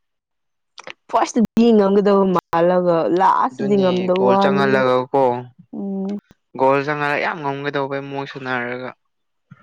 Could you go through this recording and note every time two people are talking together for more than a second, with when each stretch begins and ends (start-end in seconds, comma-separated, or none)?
3.5-4.8